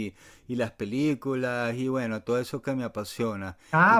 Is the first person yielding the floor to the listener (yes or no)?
yes